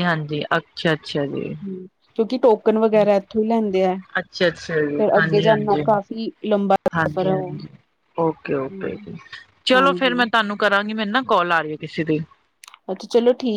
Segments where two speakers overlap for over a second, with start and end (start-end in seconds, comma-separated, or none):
none